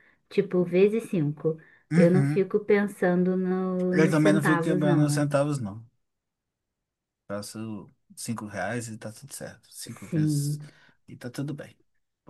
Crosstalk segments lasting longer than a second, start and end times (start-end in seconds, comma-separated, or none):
3.9-5.3